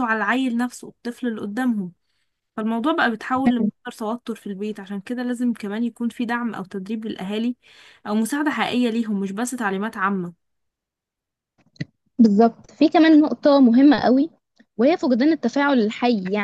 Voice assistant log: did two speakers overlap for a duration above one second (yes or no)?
no